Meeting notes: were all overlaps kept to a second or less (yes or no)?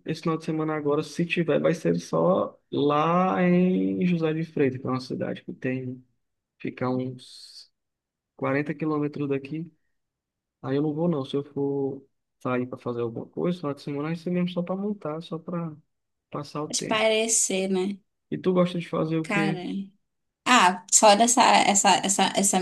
yes